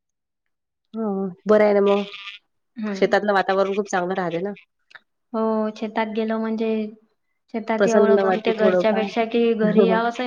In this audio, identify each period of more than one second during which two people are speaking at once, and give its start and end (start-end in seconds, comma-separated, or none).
7.8-9.0